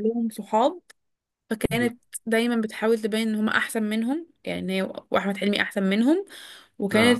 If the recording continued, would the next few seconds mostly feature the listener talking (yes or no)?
no